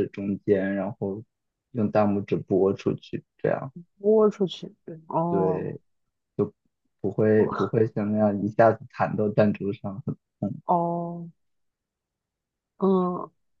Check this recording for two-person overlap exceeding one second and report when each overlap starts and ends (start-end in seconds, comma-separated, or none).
none